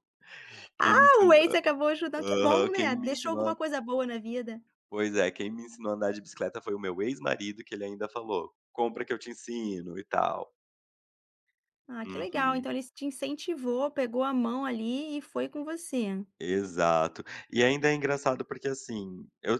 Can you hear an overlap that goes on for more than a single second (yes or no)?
yes